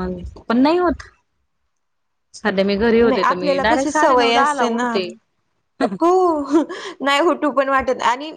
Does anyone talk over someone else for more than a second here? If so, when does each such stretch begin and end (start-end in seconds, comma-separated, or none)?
3.1-4.9